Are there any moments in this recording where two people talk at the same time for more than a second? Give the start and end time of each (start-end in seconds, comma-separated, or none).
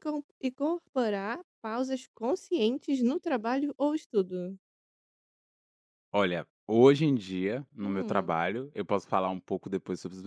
none